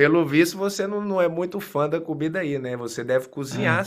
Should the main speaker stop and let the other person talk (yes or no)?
no